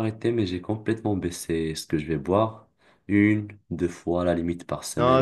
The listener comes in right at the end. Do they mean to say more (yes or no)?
yes